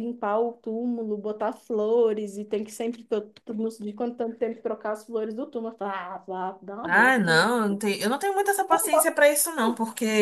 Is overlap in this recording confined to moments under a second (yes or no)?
yes